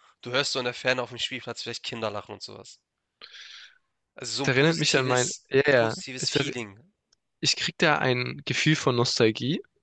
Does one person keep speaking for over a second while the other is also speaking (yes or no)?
yes